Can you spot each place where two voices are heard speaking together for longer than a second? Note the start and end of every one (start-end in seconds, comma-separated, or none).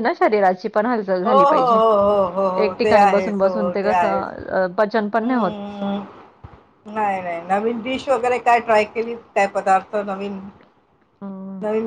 2.6-4.3